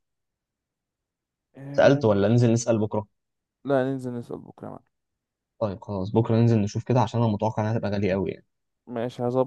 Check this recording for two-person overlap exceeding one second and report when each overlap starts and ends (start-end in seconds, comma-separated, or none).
none